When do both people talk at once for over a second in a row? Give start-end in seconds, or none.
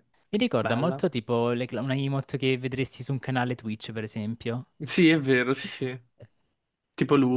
none